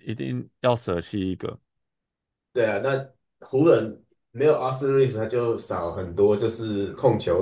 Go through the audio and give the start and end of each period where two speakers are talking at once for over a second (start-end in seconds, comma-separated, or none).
none